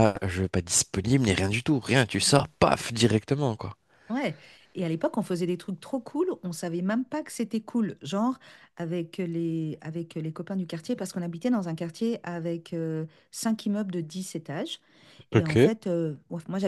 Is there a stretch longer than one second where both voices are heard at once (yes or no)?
no